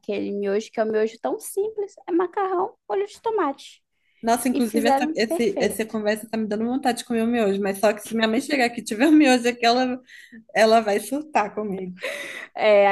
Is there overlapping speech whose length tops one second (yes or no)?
yes